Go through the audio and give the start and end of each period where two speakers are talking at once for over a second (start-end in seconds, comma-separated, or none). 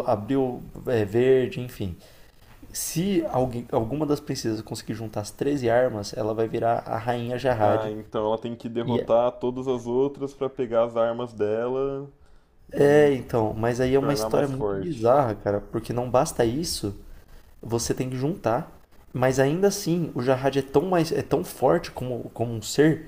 13.8-15.0